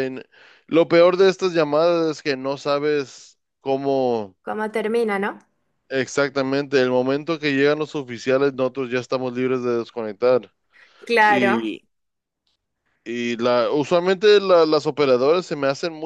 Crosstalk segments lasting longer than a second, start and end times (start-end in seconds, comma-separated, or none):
none